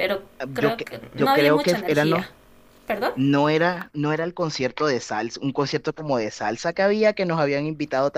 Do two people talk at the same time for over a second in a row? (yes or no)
yes